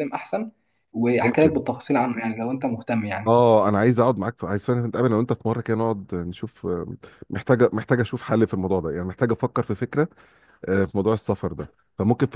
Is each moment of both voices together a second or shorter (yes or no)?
yes